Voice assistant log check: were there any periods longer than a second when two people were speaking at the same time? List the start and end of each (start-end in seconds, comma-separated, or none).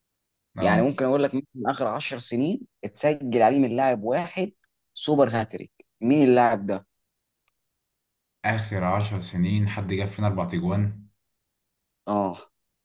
none